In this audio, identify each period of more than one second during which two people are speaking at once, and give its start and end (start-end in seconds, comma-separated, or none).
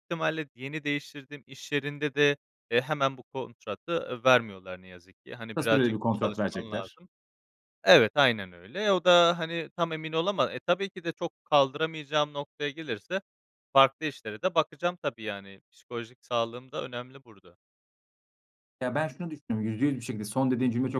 5.5-7.0